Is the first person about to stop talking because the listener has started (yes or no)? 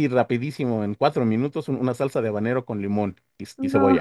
no